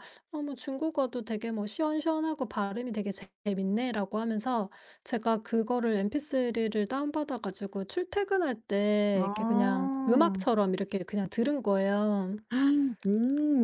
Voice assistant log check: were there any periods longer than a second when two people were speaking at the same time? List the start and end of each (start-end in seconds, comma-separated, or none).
9.2-10.5